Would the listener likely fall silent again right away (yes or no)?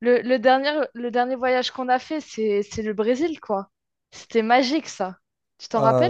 no